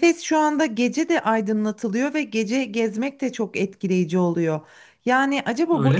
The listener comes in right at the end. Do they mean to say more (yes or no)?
no